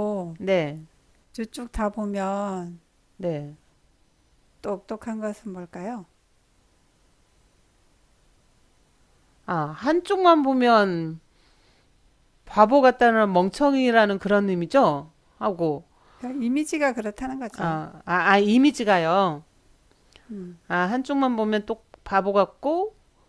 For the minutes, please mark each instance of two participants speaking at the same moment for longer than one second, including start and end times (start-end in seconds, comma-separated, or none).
none